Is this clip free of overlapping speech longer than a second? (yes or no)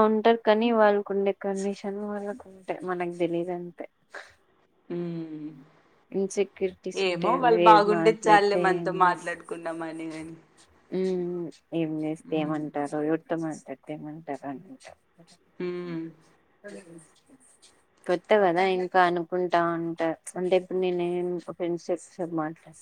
no